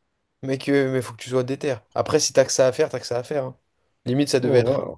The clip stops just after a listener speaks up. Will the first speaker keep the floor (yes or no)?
no